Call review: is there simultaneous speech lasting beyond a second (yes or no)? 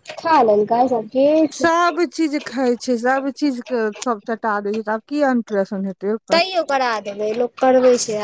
no